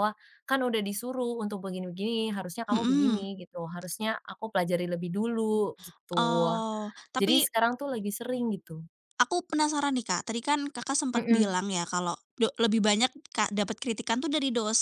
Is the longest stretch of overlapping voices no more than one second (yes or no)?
yes